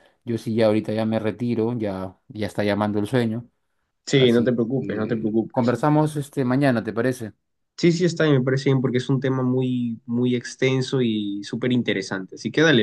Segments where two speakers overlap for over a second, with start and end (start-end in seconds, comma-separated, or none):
4.1-5.8